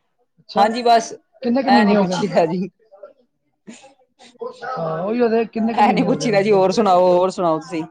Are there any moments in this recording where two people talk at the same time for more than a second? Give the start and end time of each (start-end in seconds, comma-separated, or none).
5.6-6.9